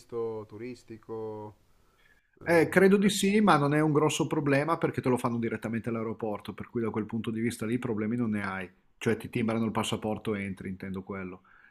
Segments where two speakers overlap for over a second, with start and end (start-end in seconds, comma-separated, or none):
none